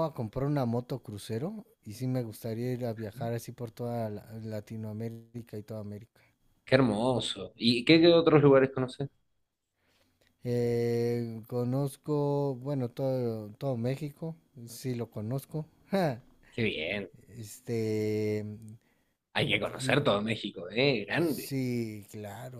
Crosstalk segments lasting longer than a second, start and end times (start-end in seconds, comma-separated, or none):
none